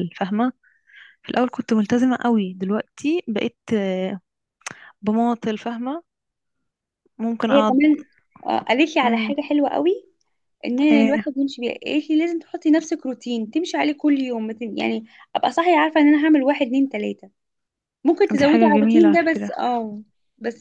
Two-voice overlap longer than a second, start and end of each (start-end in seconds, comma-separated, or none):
18.3-19.5